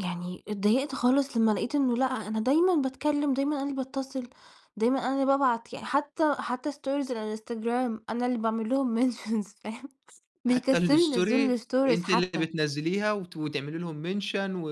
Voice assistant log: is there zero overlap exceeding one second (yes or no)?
no